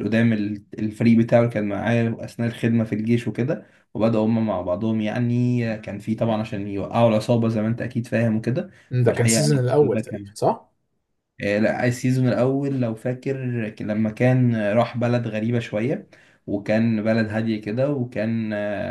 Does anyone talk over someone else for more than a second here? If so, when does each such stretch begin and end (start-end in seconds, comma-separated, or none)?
8.9-10.3